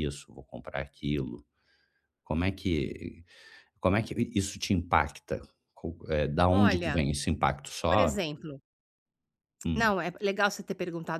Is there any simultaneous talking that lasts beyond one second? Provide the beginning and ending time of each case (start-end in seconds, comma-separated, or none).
none